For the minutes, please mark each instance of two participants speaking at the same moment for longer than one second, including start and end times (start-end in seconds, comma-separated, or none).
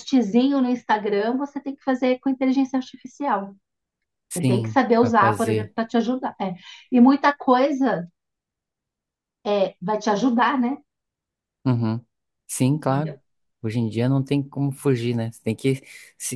4.3-5.7